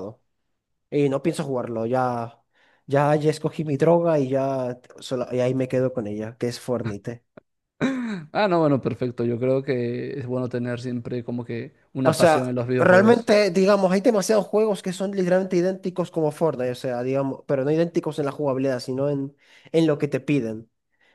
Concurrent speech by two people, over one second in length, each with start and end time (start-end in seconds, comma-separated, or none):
12.0-13.3